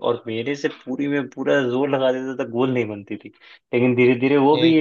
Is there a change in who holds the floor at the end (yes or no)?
no